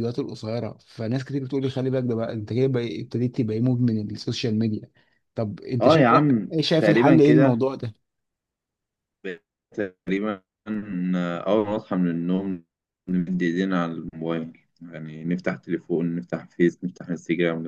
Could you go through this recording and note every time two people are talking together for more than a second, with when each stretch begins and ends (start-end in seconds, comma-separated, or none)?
5.8-7.6